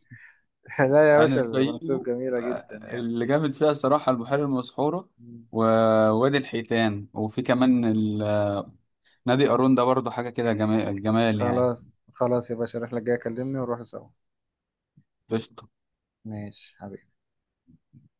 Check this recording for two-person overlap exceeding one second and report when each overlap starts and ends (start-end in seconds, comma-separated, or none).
1.1-3.1